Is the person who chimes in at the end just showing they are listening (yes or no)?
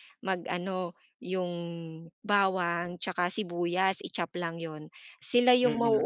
yes